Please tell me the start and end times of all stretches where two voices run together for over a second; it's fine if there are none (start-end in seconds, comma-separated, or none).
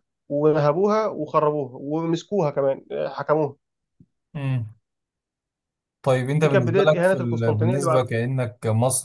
6.4-8.1